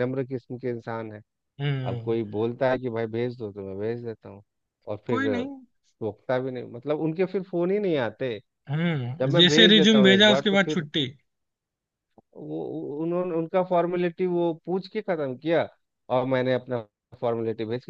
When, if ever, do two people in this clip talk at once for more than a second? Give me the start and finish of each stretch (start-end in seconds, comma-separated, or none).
9.2-10.8